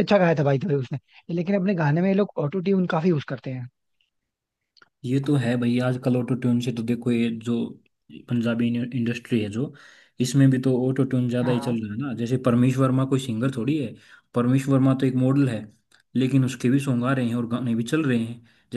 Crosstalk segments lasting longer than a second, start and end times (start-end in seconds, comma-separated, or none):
none